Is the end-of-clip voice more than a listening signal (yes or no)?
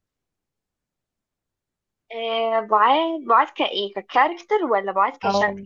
yes